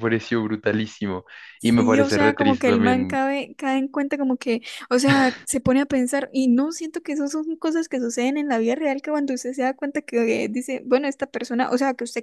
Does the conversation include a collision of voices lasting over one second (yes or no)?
yes